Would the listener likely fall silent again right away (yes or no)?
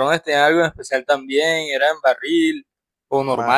no